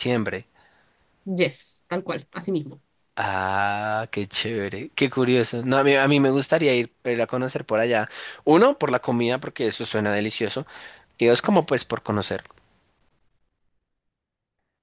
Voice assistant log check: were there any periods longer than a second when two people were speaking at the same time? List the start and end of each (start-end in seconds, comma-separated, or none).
none